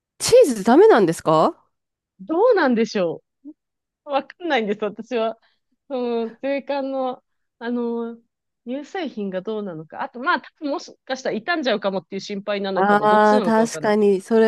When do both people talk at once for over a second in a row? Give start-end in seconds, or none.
12.7-14.0